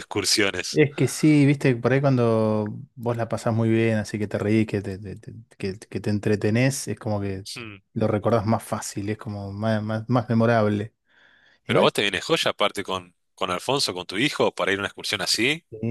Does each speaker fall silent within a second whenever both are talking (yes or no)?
yes